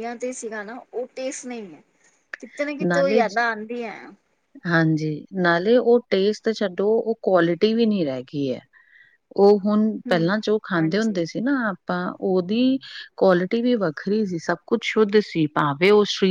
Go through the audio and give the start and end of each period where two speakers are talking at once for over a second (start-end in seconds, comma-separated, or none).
none